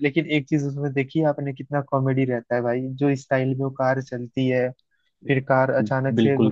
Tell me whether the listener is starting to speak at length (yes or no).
no